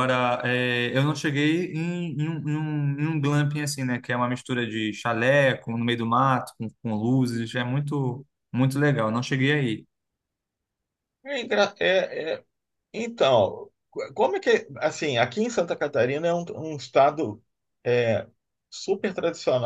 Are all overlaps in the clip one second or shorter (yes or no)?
yes